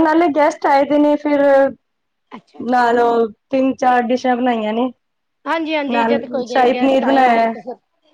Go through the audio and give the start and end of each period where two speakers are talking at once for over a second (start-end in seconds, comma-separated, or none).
5.9-7.5